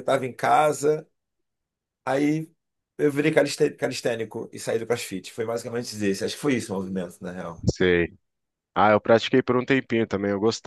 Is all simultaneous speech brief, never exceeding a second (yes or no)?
yes